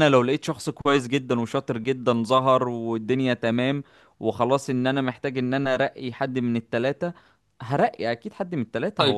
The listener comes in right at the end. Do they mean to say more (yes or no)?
yes